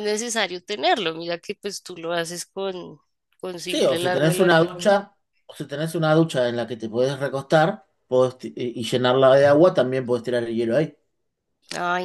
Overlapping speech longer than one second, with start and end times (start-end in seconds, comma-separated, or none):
3.7-4.9